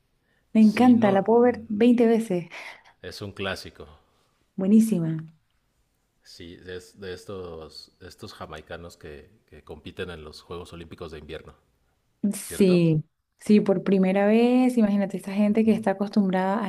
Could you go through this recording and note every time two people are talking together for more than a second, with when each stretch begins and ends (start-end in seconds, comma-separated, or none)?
0.6-1.9